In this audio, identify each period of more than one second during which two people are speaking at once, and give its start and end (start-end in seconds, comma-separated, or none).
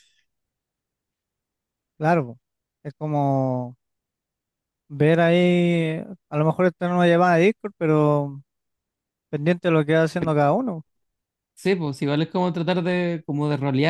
none